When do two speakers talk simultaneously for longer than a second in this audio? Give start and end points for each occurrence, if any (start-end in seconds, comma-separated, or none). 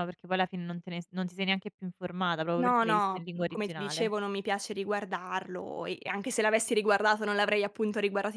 2.6-4.1